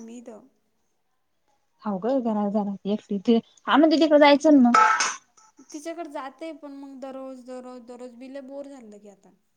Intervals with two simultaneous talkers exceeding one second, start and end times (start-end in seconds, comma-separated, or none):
none